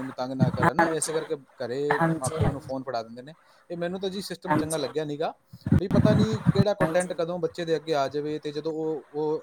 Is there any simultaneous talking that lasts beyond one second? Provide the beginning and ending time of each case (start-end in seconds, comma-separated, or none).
none